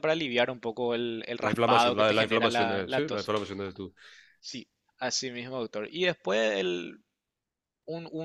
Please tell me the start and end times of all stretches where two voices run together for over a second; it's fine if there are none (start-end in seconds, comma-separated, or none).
1.4-3.3